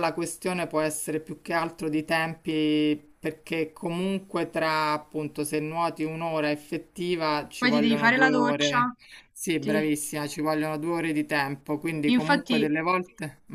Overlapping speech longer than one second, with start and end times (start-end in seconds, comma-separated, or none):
7.6-8.8